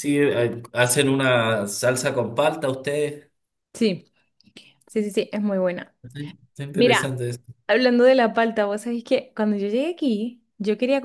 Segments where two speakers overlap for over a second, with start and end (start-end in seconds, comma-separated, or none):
none